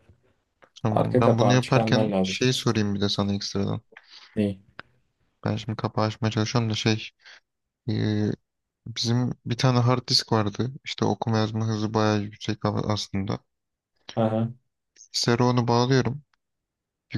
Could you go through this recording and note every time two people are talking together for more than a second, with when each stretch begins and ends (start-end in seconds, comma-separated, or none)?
0.9-2.4